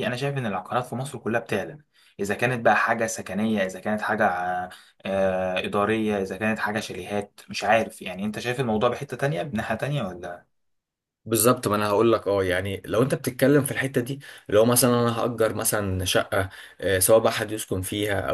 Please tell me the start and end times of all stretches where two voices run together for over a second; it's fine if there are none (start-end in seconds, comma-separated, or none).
none